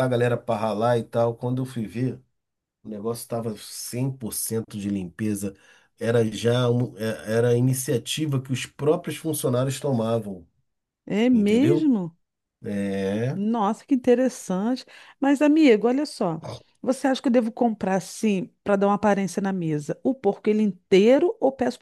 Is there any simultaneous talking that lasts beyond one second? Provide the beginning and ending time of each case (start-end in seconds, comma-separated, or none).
none